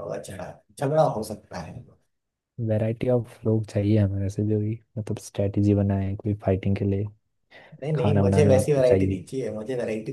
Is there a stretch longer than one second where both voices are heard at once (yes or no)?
yes